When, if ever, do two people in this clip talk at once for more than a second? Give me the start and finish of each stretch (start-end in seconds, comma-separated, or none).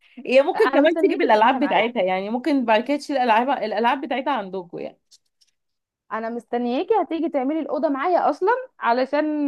0.6-1.9